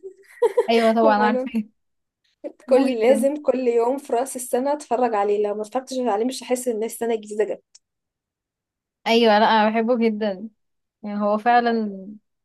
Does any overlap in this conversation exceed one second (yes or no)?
no